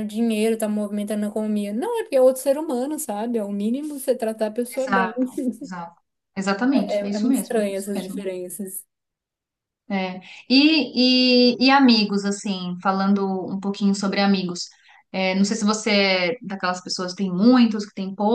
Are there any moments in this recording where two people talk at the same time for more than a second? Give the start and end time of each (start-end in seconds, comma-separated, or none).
6.7-8.2